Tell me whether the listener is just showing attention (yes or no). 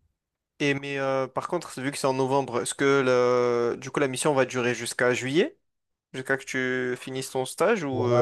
no